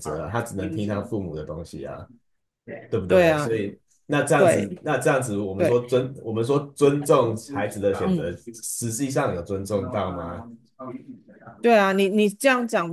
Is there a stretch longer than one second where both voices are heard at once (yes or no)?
no